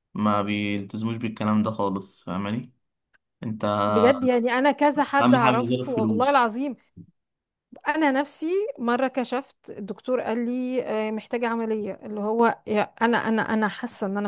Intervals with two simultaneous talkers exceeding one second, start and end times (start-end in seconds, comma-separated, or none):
5.2-6.4